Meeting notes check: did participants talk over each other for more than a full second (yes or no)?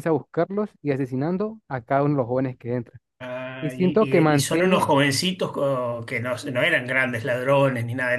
yes